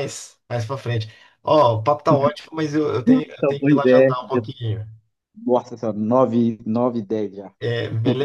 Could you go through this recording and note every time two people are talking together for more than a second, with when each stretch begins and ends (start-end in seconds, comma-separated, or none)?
3.1-4.4